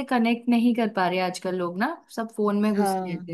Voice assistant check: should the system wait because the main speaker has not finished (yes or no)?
yes